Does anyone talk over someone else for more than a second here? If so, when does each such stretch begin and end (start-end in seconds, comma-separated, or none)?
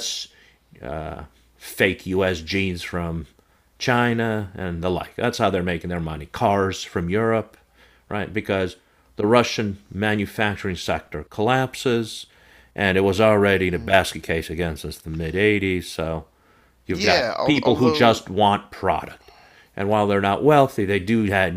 16.9-18.2